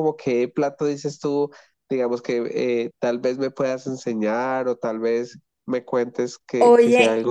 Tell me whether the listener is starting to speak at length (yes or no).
yes